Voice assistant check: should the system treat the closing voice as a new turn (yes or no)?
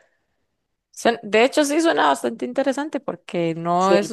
no